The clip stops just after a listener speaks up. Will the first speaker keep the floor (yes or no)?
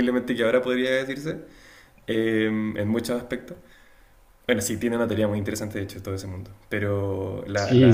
no